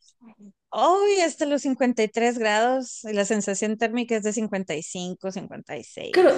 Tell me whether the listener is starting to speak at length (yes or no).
yes